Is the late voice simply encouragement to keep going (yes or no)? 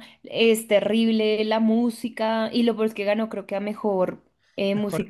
no